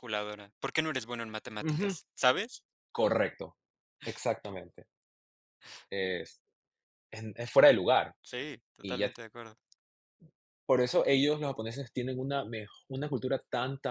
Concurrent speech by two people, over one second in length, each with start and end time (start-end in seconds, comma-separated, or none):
none